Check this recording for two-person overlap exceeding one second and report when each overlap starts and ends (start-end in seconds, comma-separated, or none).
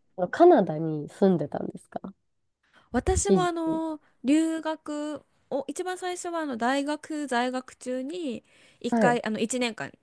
none